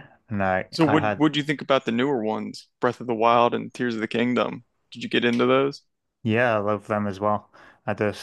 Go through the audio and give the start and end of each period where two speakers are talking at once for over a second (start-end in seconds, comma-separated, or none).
none